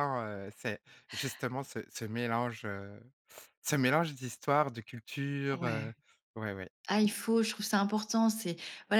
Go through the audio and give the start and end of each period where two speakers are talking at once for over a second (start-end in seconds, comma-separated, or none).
none